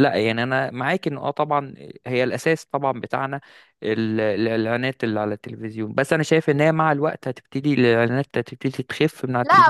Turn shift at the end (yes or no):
yes